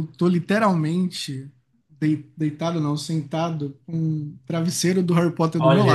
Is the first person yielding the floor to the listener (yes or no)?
yes